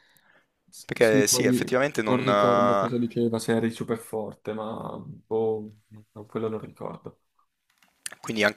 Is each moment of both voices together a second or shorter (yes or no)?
no